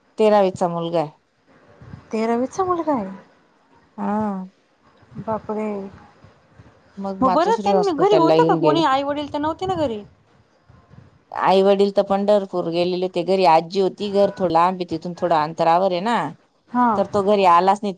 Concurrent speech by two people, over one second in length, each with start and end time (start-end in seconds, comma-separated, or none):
7.3-8.8